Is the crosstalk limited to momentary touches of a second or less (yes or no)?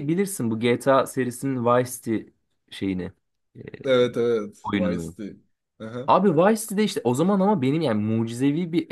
yes